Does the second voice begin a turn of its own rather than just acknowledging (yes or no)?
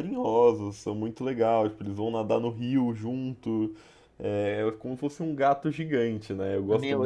yes